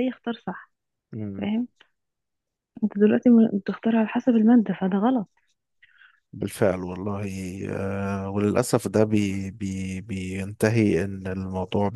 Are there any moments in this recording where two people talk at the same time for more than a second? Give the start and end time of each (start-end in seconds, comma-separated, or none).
none